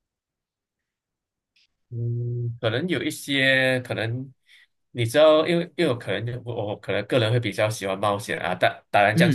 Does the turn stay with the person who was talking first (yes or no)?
yes